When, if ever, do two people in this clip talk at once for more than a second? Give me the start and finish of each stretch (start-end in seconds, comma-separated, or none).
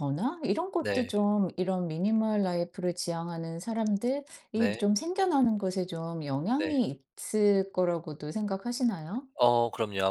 none